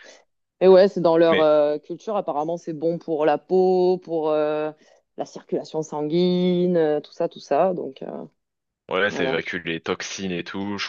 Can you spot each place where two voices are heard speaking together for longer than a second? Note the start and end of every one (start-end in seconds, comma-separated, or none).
none